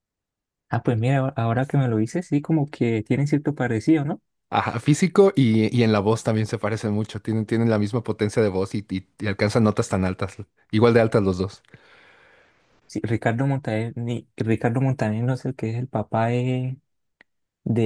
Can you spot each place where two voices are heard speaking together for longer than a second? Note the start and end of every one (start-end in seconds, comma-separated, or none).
none